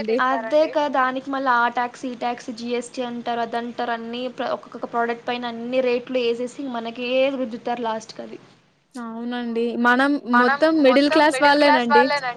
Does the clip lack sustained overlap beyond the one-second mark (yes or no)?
yes